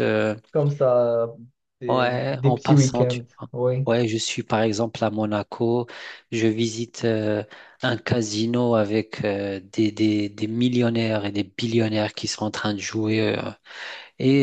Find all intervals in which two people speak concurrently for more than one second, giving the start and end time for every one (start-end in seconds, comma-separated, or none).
1.9-3.5